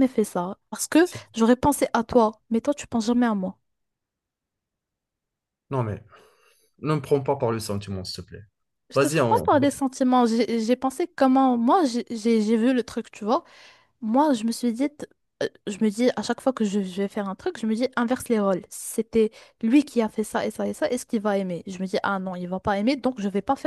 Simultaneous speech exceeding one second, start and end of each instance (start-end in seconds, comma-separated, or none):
none